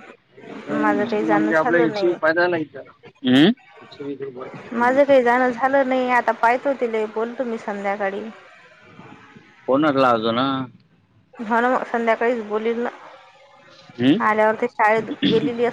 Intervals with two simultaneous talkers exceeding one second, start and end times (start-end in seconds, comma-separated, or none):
0.8-2.1